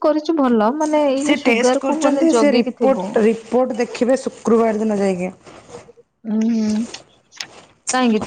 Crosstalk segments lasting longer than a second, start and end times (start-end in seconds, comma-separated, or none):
1.2-3.0